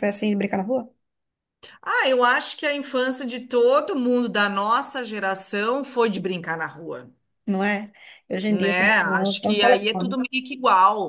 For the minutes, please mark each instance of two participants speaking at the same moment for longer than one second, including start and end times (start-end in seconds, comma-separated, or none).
8.5-10.2